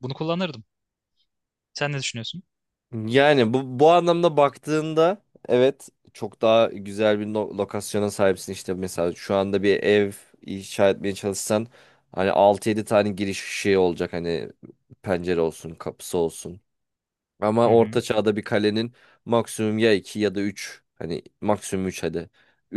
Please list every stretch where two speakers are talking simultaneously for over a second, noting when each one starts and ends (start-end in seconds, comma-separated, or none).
none